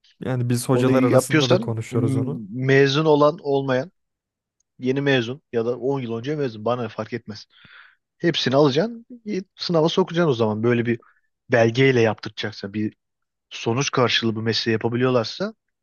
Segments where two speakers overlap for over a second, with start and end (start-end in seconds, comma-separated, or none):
0.7-2.4